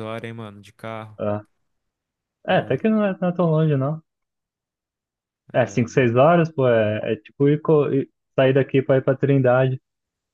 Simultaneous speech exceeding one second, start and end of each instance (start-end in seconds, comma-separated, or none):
none